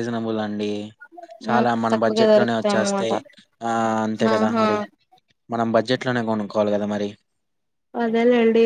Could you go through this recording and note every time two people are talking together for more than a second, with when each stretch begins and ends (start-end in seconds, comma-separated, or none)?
1.5-3.1